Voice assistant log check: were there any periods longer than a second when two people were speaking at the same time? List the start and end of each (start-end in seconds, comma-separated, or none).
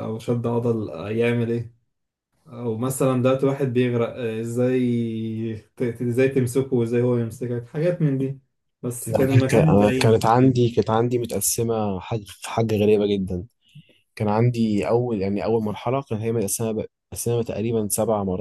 9.1-10.7